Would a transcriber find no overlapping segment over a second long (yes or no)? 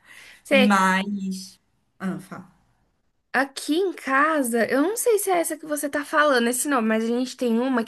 yes